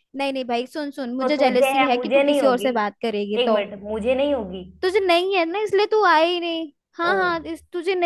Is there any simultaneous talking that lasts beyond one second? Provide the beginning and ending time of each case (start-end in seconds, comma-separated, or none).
1.2-2.7